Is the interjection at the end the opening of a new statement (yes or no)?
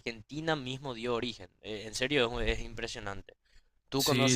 no